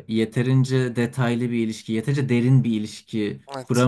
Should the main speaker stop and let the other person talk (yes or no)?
yes